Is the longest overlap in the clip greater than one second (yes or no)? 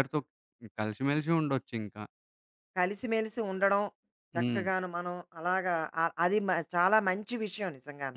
no